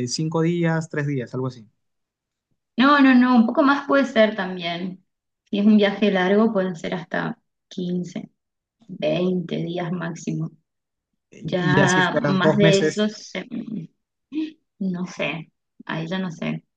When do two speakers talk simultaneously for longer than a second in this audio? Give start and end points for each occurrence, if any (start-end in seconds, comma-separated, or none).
11.4-13.1